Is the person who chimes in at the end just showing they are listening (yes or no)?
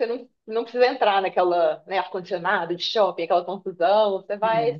yes